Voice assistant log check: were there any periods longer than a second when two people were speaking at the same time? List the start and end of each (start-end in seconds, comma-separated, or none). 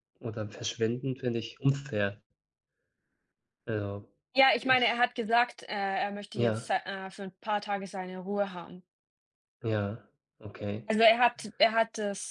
none